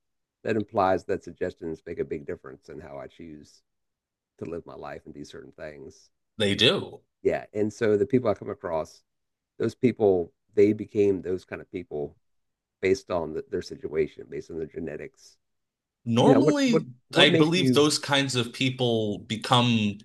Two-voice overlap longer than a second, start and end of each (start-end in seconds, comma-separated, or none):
16.2-17.9